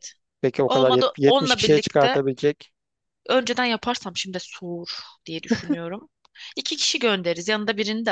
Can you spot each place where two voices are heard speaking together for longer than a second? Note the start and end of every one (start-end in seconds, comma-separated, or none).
0.7-2.2